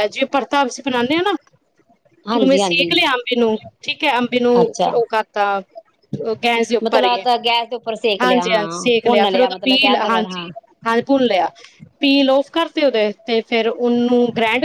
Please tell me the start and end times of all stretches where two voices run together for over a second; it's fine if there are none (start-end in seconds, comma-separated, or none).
8.2-10.5